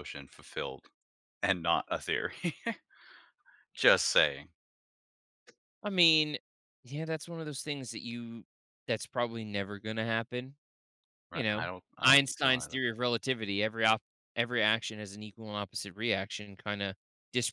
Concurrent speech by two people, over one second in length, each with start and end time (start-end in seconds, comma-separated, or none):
11.3-12.8